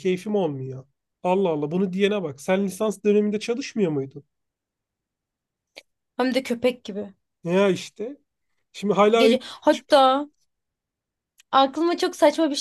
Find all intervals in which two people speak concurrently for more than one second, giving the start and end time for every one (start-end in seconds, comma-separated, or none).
none